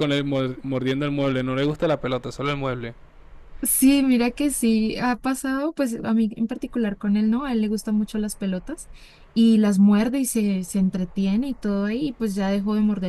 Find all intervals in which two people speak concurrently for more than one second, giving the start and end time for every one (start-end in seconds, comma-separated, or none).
none